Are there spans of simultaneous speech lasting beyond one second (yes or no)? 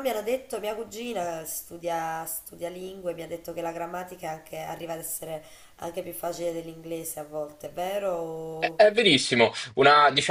no